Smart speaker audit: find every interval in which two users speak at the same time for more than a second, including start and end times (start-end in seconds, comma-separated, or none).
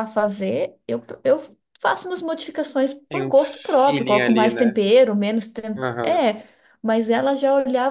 3.1-4.8